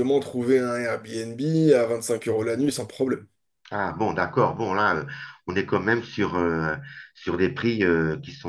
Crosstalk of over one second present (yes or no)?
no